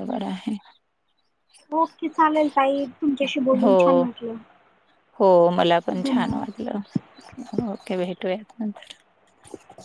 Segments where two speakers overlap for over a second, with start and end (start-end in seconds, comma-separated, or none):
none